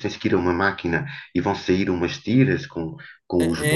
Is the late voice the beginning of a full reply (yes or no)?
yes